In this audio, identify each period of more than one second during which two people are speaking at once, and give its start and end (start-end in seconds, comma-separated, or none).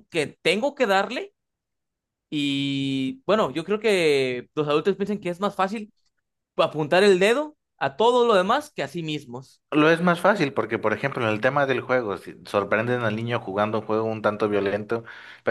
none